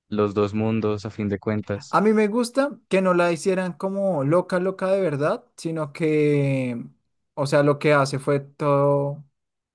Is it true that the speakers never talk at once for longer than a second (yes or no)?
yes